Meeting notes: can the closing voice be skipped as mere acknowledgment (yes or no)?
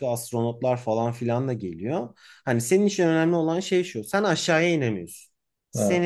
yes